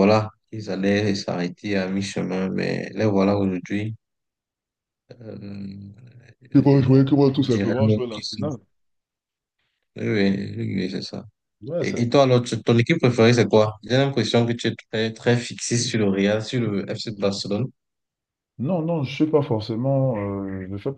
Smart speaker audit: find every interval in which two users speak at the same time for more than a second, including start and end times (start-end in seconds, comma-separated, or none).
6.7-8.4